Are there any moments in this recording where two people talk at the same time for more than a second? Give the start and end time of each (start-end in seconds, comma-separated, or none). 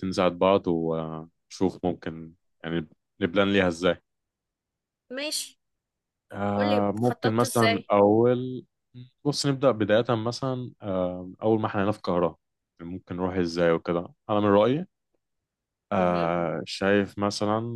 6.5-7.9